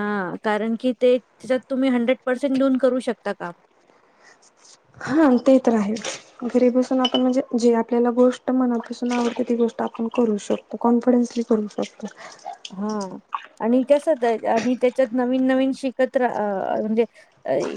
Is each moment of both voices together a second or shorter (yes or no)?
yes